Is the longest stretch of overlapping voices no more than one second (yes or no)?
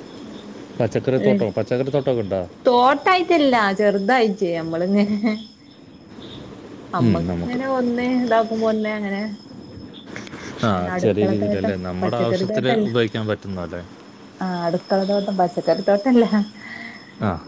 no